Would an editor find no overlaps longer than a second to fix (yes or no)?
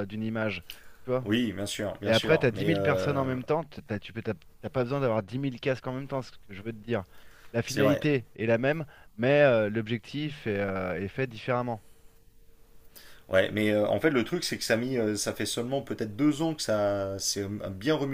no